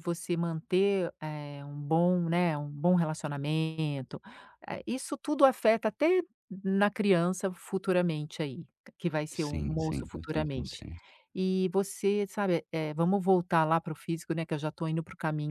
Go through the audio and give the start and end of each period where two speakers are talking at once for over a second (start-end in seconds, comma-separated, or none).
9.3-10.8